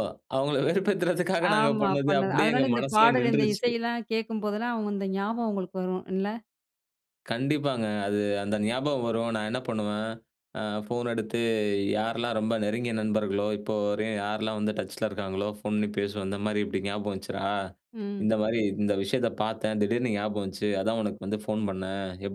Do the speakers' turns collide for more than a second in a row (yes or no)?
yes